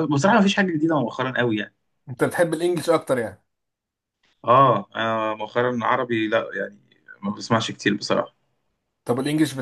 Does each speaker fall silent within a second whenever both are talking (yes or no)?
yes